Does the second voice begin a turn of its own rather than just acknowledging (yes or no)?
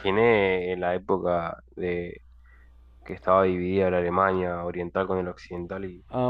yes